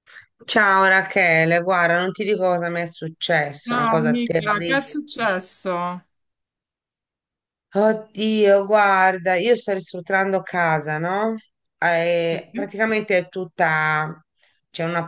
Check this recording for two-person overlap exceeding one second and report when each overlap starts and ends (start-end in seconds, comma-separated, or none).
3.7-5.0